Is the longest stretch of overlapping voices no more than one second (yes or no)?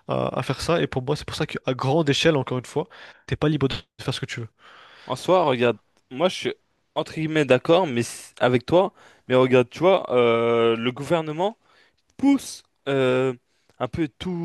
yes